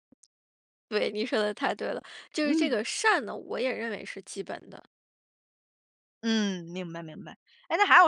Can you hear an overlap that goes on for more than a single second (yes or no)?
no